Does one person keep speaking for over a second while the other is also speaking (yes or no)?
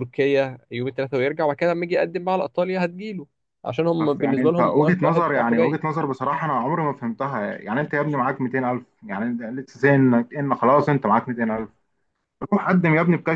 yes